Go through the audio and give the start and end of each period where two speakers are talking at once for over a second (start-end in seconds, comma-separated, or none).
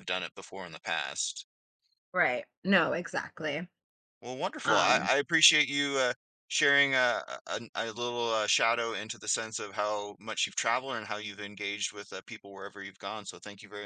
none